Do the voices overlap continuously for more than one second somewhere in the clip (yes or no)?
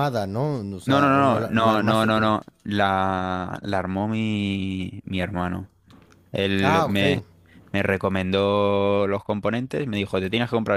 yes